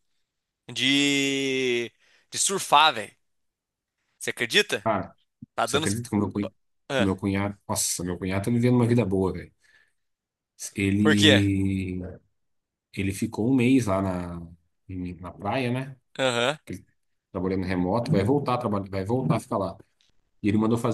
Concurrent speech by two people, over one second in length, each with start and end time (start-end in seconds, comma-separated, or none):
none